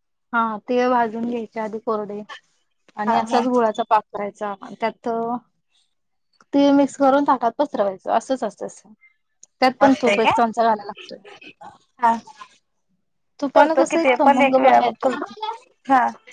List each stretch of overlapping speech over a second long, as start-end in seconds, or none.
13.5-15.5